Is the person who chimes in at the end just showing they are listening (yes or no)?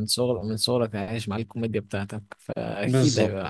yes